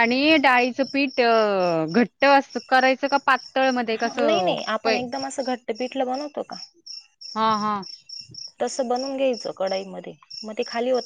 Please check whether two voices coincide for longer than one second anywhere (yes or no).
no